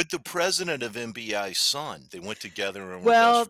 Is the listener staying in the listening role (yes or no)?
no